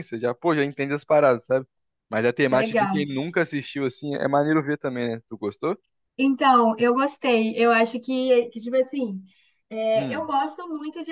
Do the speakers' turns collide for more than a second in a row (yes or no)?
no